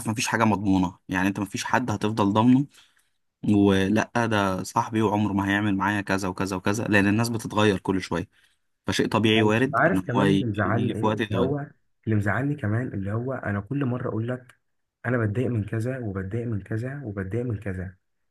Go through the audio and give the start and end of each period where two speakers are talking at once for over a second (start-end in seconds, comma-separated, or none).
9.3-11.5